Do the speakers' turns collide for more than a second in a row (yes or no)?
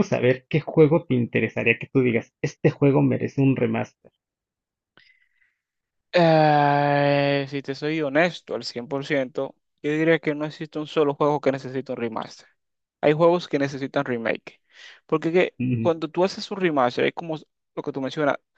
no